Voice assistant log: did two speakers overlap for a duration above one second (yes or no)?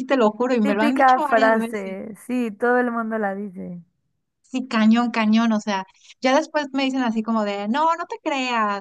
yes